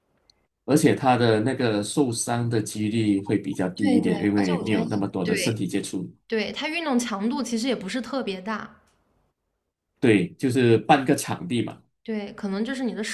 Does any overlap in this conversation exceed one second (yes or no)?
yes